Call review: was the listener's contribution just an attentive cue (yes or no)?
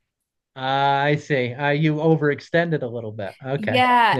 no